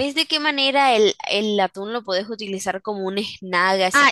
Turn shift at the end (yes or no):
yes